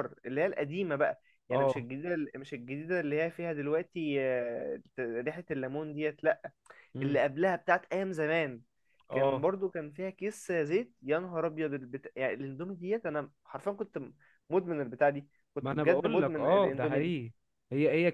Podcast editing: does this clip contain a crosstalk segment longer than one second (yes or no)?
yes